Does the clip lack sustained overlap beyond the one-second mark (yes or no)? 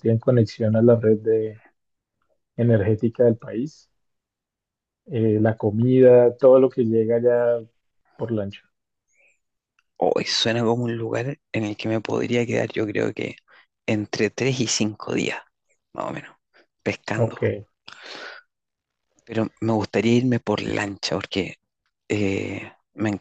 yes